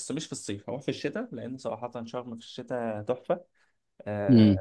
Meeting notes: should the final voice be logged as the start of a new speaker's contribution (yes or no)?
no